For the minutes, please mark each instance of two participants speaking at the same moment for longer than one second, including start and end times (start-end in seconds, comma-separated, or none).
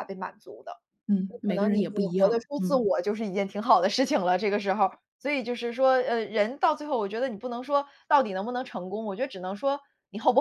1.3-2.8